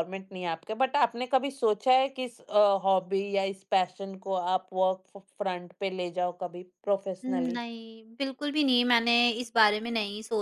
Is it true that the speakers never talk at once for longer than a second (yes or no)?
yes